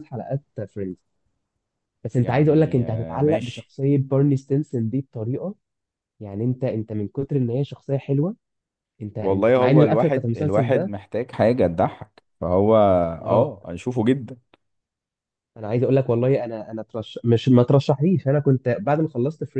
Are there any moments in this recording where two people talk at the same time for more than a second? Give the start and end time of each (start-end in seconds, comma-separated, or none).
2.2-3.7, 9.2-10.9